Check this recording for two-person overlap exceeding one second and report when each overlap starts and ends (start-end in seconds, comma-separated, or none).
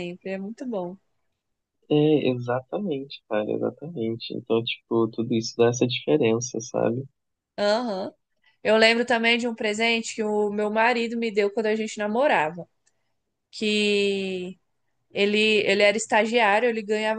none